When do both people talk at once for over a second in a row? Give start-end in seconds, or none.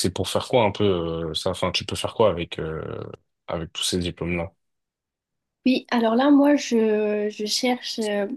none